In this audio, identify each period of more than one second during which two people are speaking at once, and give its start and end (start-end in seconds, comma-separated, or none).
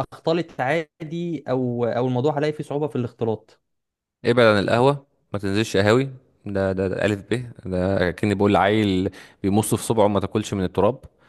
none